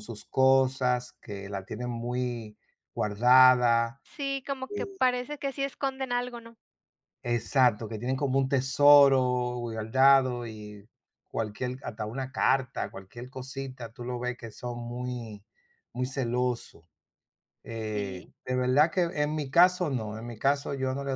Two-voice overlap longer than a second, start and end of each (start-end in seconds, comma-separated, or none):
none